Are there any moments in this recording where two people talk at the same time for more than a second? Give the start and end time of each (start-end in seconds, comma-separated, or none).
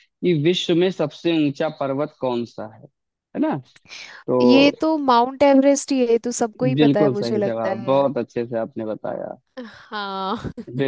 6.8-8.0